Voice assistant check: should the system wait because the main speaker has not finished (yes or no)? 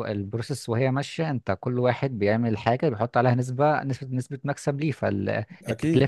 yes